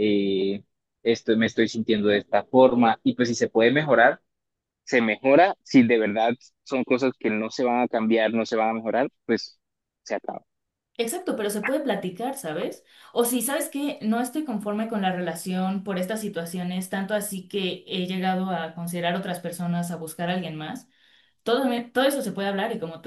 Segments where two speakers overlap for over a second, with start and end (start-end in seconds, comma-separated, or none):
none